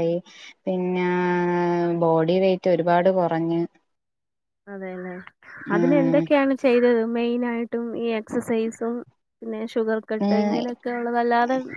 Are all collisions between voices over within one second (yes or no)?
yes